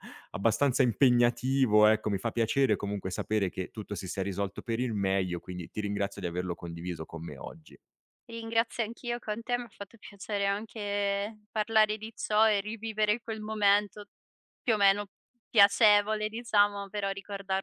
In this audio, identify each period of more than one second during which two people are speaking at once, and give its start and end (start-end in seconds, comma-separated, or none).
none